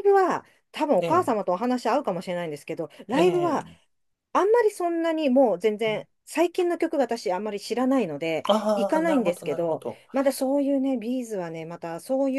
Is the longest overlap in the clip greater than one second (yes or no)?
yes